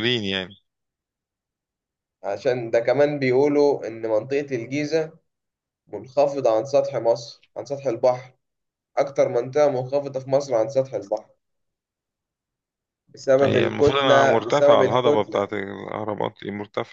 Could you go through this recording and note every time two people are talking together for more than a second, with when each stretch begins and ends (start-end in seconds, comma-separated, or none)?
13.4-15.5